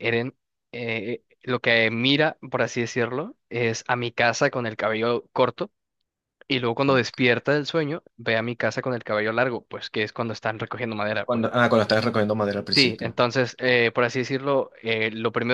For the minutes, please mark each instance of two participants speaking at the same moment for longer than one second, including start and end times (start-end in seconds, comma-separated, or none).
none